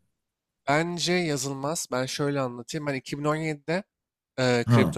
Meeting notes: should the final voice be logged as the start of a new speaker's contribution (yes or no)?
no